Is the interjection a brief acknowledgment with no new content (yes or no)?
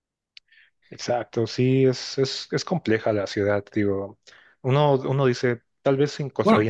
yes